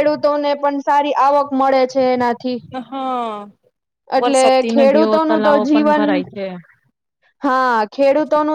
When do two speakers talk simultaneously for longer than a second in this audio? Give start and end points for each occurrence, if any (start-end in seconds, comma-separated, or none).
4.2-6.0